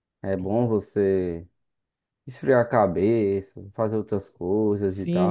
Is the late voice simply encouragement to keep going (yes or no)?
no